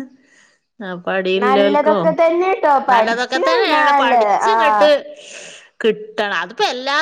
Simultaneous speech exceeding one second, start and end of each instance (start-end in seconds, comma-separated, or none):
2.9-4.9